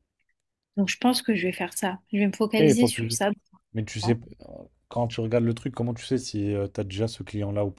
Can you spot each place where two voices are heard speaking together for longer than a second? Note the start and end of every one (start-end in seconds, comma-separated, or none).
none